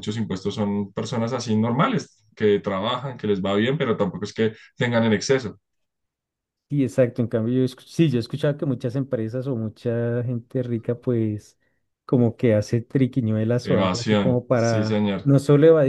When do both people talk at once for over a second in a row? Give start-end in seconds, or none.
13.6-15.3